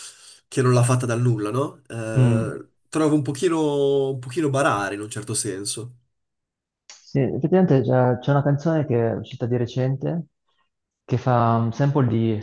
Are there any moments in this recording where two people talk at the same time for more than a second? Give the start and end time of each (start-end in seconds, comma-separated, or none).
none